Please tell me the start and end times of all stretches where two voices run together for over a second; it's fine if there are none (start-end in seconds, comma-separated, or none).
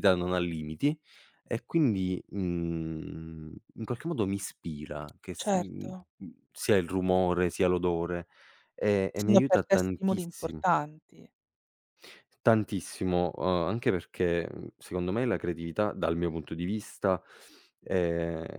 9.1-10.7